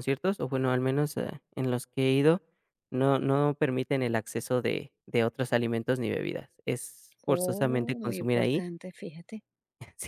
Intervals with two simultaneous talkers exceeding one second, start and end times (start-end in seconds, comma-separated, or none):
7.3-8.6